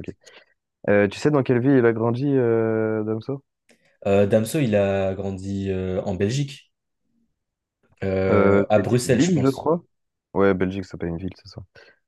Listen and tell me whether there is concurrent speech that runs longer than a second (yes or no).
yes